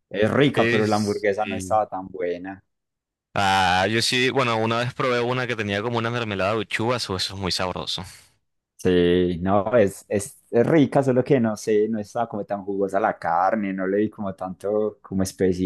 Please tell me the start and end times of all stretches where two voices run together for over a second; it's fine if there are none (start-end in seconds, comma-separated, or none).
0.5-1.8